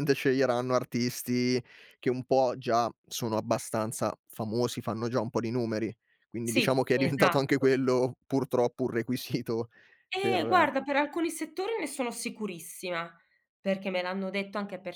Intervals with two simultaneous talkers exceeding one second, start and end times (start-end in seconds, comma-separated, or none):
6.4-7.7